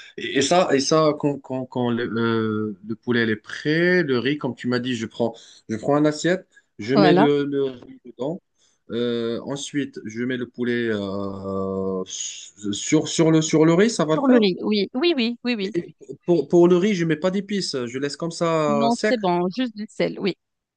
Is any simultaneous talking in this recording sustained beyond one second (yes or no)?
no